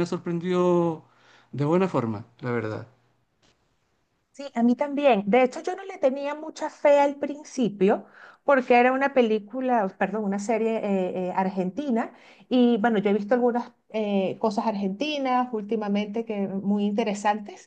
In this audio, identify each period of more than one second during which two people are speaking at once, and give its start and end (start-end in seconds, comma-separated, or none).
none